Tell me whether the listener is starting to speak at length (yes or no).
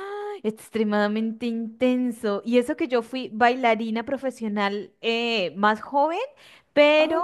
no